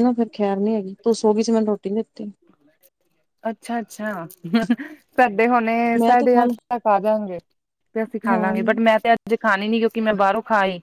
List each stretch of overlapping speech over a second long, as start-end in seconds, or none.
none